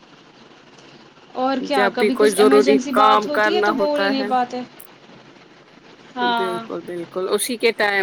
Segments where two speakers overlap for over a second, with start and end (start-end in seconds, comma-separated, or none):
1.7-4.1